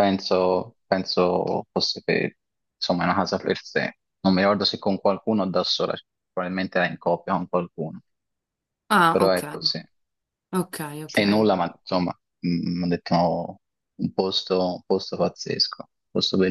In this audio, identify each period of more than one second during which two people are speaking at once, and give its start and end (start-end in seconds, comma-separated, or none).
none